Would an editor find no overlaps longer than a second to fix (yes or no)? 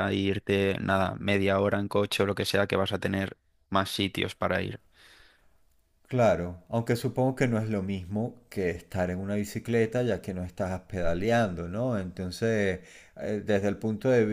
yes